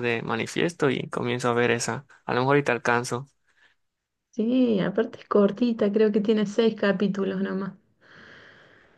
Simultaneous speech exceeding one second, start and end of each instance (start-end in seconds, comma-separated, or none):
none